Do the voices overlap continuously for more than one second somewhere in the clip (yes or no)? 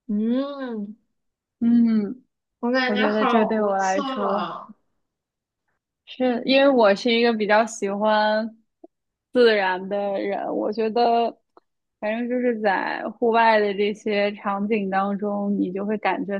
yes